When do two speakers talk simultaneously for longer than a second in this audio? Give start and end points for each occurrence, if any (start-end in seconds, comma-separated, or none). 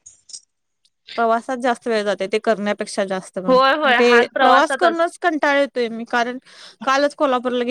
3.5-5.0